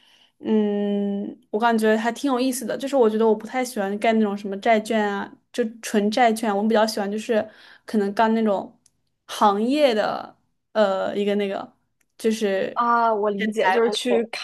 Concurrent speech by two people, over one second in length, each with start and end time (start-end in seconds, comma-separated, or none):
none